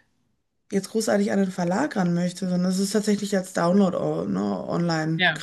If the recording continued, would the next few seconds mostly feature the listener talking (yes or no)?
no